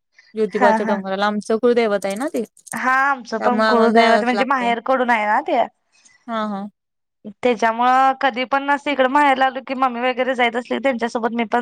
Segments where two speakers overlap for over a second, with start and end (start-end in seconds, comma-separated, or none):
2.8-4.7